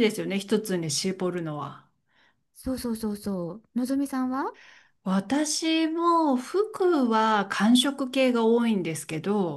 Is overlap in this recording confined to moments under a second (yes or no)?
yes